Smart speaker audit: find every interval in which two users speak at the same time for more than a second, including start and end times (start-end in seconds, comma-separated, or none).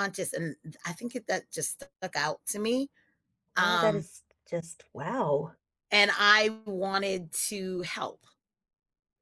none